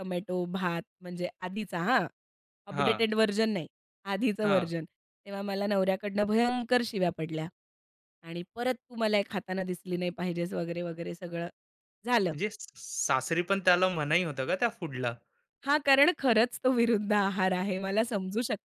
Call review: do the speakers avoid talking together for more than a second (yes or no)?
yes